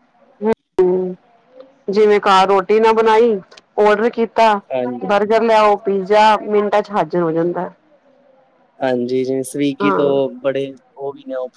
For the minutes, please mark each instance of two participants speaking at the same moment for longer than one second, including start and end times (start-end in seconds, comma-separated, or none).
none